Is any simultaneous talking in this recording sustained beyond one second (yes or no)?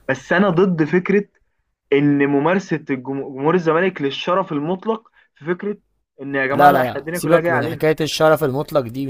yes